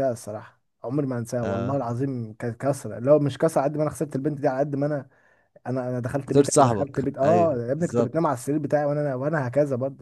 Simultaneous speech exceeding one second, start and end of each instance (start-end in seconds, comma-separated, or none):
6.2-8.3